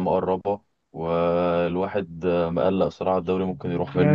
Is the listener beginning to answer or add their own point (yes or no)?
yes